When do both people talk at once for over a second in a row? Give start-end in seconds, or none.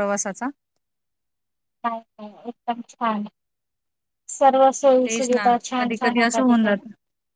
5.0-6.7